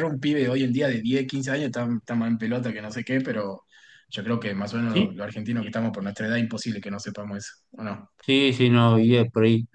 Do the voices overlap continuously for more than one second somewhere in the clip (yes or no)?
no